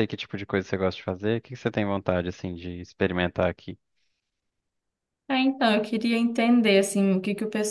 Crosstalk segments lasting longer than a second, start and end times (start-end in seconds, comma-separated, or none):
none